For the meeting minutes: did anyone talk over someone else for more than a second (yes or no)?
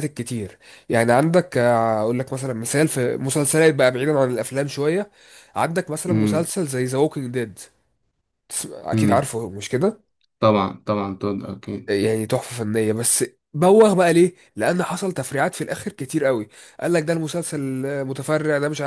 no